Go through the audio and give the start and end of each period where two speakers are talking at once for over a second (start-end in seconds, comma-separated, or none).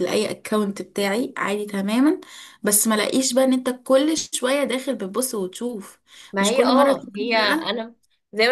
6.4-7.8